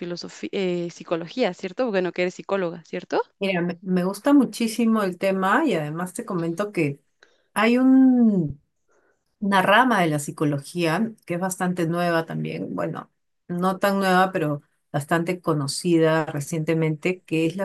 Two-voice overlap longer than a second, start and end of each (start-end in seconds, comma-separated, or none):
none